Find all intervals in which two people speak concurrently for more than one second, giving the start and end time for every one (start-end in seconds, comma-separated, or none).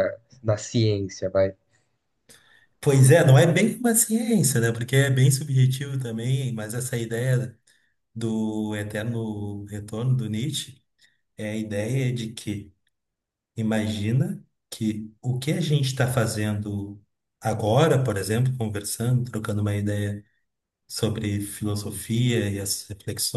none